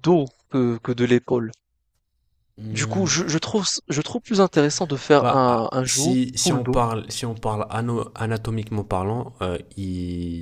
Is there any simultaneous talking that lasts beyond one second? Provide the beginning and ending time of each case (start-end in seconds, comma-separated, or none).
5.2-6.8